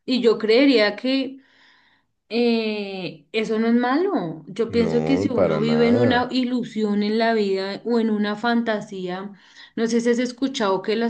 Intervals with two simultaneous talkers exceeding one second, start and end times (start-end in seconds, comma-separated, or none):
4.7-6.2